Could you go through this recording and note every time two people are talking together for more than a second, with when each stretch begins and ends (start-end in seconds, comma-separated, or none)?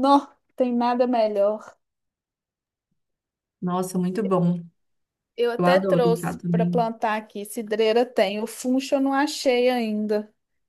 5.6-6.9